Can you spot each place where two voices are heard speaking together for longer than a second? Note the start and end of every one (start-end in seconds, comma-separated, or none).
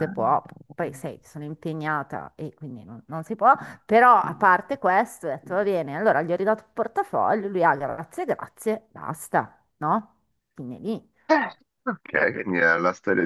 none